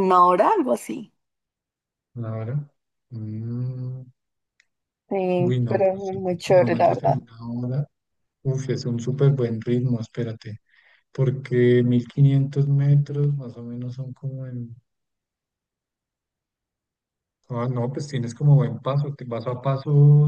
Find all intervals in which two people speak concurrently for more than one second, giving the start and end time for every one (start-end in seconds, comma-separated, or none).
5.4-7.2